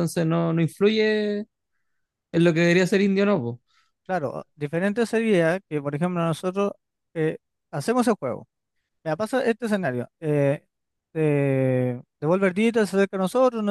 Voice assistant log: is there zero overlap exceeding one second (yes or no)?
yes